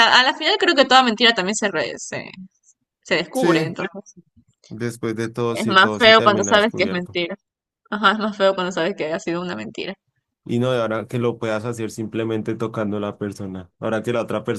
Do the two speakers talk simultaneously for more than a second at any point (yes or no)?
yes